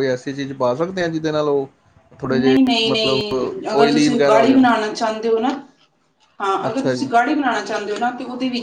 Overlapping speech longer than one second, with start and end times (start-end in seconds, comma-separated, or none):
2.4-4.6